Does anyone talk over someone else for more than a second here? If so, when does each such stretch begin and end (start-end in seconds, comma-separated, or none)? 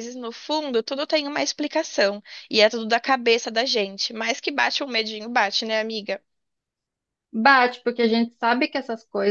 none